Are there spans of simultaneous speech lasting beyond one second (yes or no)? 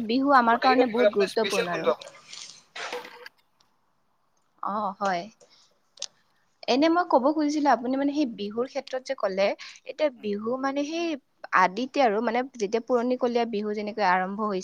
yes